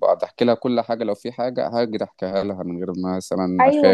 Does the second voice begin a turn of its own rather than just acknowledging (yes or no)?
yes